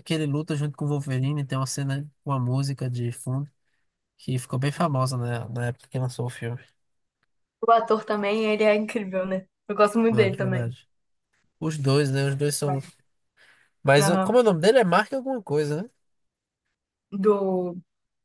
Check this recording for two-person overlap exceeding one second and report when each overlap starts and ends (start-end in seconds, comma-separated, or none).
none